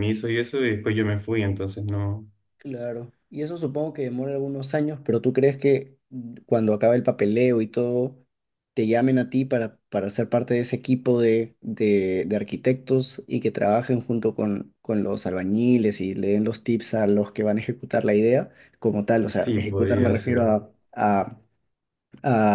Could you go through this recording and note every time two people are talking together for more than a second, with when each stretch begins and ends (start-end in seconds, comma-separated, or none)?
19.3-20.5